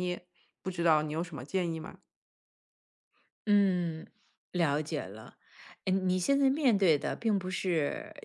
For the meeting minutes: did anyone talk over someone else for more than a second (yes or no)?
no